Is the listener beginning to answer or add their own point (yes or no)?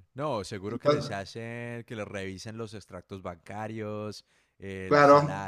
yes